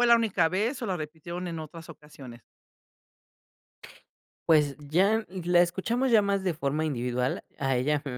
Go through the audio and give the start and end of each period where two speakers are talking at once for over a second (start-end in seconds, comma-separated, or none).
none